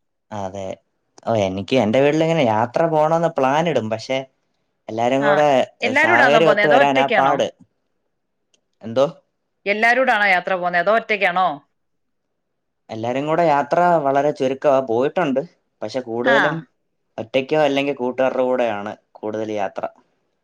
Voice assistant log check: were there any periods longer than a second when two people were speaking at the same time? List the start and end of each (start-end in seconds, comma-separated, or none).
6.0-7.3